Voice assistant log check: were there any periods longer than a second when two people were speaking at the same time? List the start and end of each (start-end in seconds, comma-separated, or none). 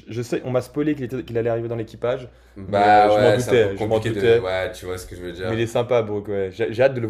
2.7-4.4